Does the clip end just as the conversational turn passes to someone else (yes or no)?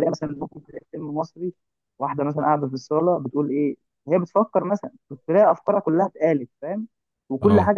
no